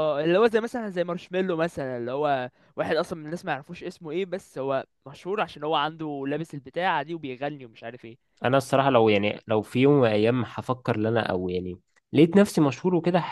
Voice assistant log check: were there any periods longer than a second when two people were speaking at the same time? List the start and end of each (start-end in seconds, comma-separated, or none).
none